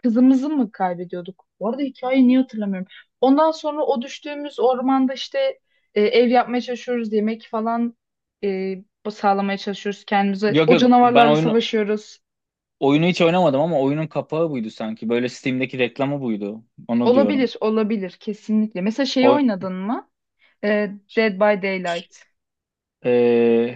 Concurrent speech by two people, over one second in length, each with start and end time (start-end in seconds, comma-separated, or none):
10.5-11.7